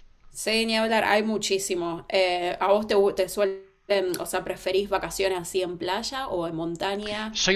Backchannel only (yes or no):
no